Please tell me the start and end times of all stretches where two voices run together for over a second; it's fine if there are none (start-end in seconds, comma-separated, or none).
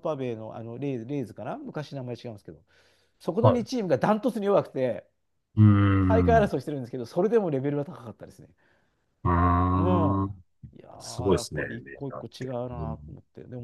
11.0-13.0